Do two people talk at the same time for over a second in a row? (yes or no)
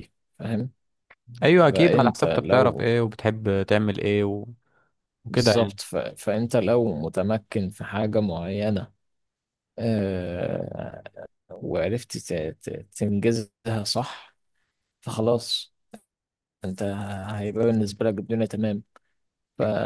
yes